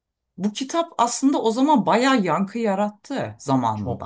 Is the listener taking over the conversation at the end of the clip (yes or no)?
yes